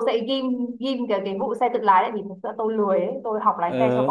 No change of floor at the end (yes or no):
yes